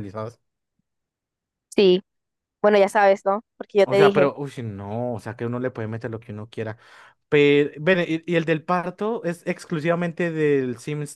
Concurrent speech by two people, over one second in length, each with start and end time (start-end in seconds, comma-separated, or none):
none